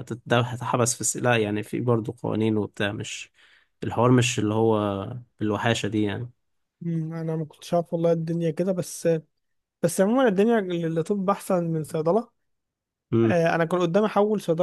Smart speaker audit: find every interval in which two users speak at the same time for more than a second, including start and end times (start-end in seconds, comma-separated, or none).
none